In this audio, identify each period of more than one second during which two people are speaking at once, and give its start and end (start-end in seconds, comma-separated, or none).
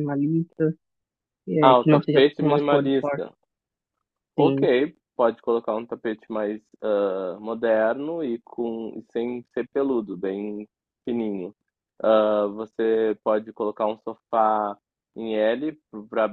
1.6-3.2